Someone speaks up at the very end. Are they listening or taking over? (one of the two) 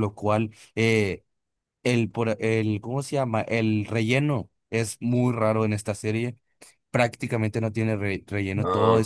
listening